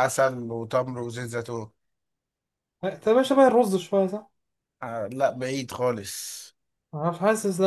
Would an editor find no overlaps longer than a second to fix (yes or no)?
yes